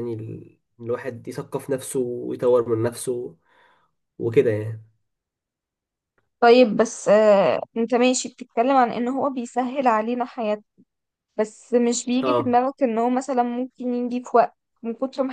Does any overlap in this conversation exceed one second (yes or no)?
no